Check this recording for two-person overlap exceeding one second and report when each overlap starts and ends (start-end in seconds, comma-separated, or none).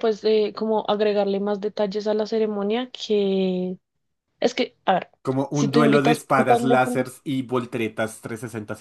5.5-7.1